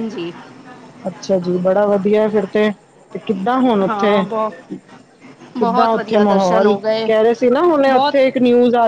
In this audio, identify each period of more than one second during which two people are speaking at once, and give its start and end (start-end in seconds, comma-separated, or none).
5.6-7.1